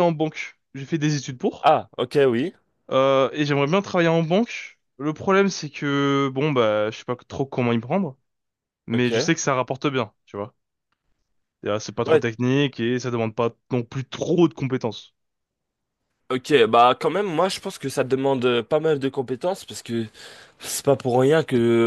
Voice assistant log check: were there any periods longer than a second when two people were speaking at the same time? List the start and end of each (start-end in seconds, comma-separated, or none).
none